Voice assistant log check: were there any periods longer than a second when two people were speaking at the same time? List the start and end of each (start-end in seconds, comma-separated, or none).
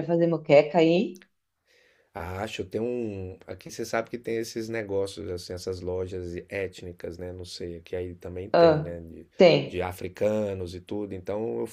none